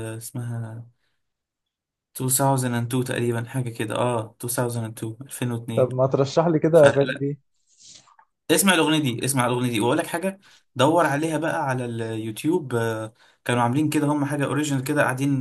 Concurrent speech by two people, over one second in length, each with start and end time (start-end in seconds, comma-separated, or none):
none